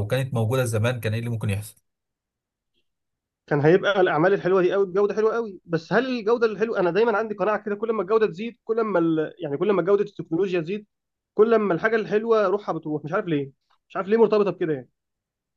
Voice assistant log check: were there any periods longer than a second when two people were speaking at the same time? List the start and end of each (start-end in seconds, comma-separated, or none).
none